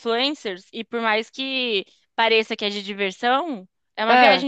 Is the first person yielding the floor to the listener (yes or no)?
no